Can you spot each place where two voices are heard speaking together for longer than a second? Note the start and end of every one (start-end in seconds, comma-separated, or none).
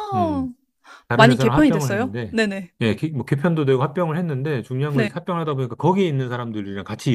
1.1-2.4